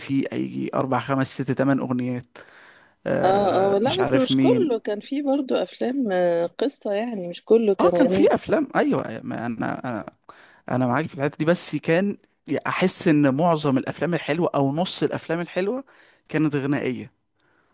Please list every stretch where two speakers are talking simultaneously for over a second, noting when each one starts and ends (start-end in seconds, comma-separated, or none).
3.2-4.8